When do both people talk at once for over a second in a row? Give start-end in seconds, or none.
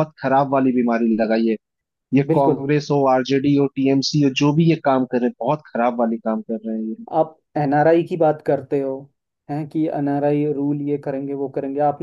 none